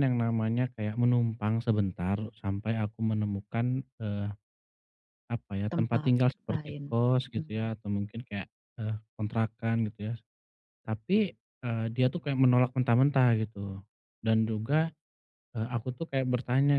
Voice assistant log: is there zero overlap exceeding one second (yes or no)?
no